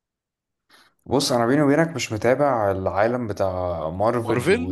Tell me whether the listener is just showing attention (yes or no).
yes